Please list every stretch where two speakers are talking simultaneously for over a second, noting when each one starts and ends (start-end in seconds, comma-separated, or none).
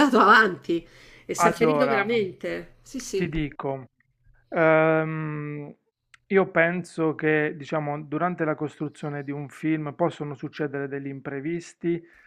none